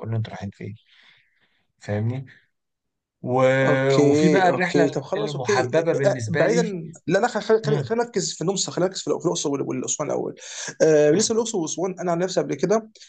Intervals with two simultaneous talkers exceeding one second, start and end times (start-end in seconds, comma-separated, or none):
4.0-6.6